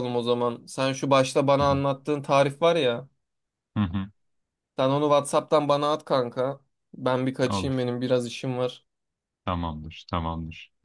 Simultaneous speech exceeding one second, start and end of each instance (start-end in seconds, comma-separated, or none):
none